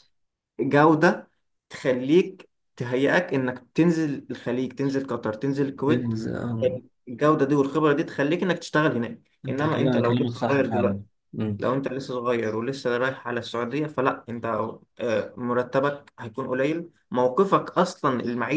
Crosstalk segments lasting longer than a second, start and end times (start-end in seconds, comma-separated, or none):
9.4-11.0